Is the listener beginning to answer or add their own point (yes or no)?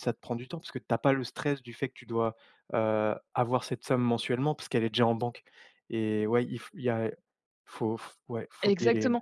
yes